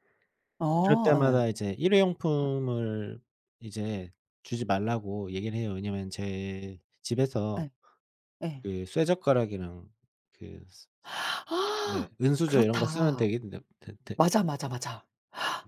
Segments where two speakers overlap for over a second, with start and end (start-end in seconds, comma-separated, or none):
11.8-13.2